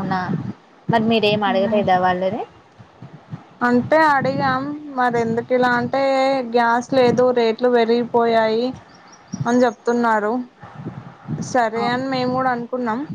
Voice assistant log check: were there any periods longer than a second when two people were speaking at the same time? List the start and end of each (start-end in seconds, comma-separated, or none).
none